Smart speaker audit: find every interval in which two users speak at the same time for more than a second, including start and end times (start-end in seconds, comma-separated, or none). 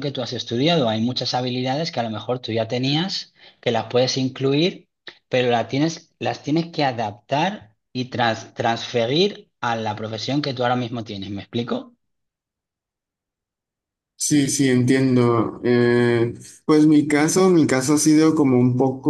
none